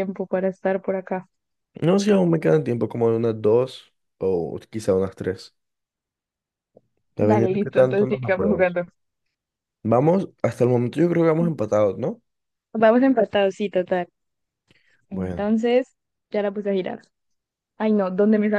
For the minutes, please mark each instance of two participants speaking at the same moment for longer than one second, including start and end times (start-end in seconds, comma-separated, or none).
7.2-8.8